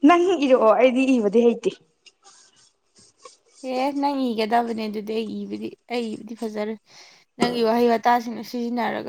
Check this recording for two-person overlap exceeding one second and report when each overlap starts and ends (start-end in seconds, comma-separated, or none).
none